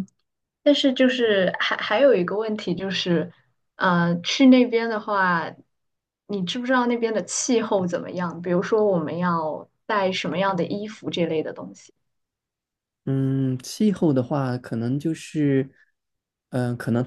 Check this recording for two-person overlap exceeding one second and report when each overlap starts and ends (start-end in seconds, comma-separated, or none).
none